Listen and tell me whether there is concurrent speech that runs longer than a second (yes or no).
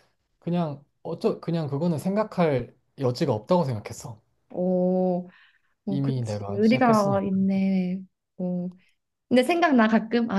yes